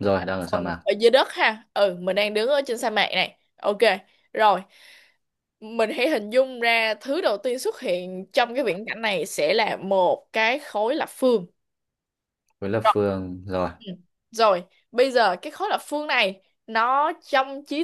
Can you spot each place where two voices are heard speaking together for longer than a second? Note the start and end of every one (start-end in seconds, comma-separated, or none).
none